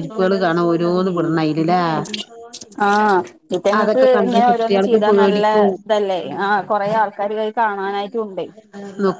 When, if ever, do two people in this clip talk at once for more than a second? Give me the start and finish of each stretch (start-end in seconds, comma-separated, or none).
3.8-5.4